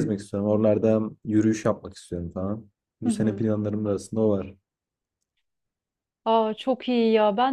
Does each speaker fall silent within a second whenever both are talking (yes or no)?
yes